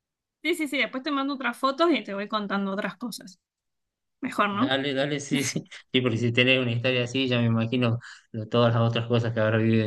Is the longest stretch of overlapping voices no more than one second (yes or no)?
yes